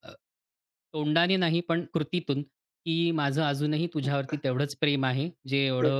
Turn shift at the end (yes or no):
no